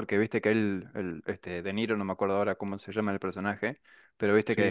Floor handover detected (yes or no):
no